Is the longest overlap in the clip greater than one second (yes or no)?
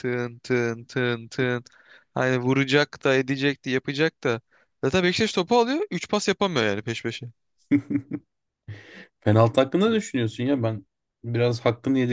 no